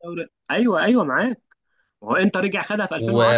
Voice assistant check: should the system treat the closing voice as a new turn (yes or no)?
yes